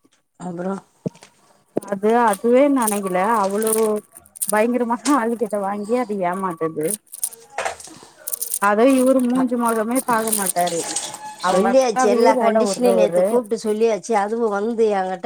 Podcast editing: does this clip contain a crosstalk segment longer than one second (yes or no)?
yes